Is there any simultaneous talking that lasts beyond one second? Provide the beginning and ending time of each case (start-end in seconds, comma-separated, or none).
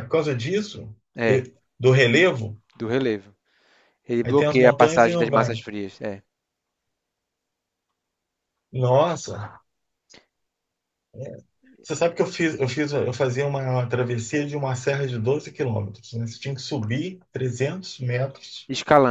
4.2-5.6